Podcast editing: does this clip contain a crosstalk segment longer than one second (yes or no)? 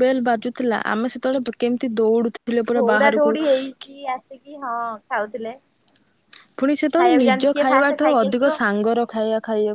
yes